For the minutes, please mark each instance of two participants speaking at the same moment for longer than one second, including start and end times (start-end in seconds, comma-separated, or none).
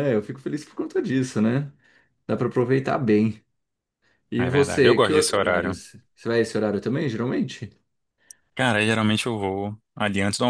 4.4-5.8